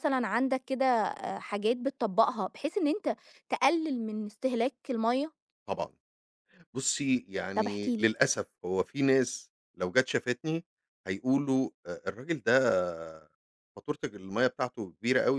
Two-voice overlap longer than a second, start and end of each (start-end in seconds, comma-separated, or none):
none